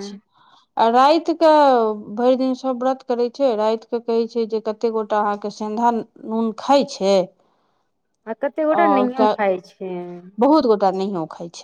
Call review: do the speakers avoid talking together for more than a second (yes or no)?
yes